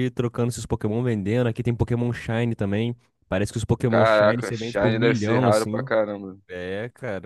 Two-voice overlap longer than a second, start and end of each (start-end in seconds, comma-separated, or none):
3.9-5.9